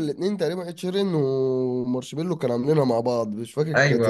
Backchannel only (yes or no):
no